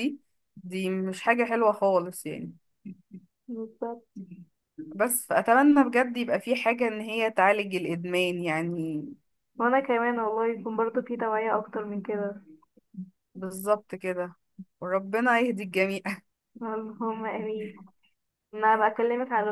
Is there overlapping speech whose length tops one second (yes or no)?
no